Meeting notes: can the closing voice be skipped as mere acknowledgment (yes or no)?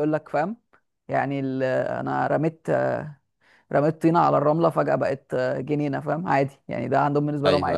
no